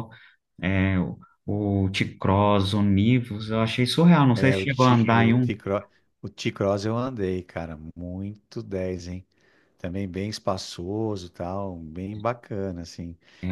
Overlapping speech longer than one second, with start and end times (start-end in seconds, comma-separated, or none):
4.3-5.5